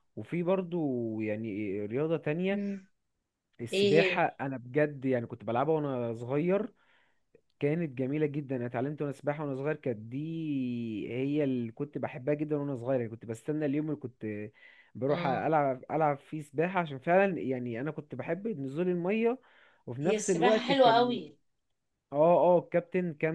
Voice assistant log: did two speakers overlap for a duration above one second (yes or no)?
yes